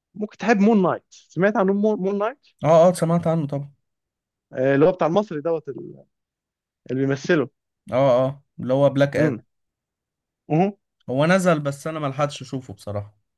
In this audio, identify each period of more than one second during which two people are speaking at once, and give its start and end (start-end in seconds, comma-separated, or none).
none